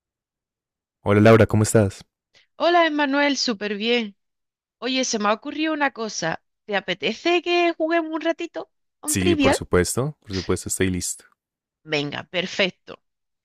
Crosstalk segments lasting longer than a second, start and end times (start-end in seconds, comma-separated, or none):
none